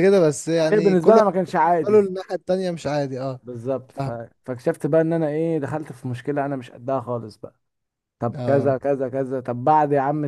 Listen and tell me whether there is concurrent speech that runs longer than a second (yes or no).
yes